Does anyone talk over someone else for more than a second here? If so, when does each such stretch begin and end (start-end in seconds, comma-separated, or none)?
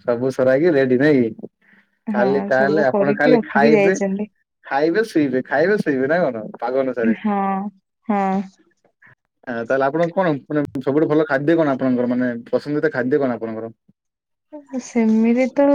2.2-4.0